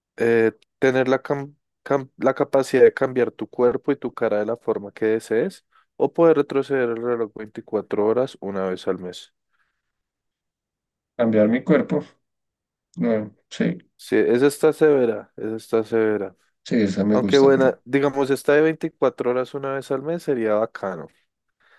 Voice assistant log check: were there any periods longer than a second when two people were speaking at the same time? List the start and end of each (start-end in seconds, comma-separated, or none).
none